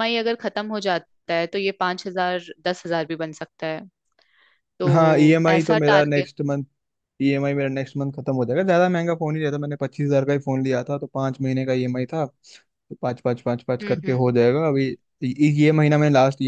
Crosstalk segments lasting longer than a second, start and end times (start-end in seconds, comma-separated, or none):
4.9-6.3